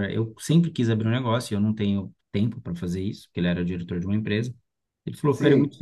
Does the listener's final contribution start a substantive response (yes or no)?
no